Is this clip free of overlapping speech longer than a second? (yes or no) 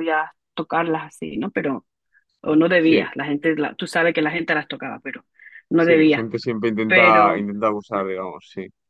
yes